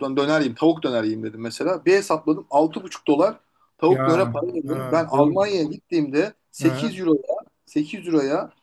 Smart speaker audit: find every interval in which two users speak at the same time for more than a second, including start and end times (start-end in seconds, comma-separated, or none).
3.9-5.4